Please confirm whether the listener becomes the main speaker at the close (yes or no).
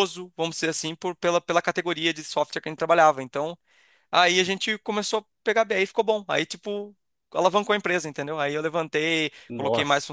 no